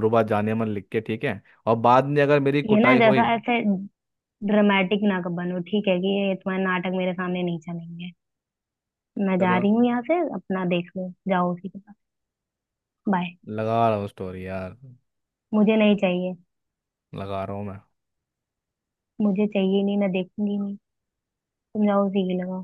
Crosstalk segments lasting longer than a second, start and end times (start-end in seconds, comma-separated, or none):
none